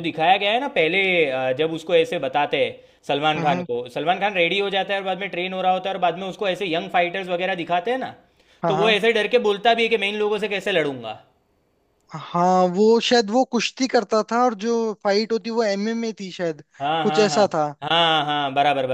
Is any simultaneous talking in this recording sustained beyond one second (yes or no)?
no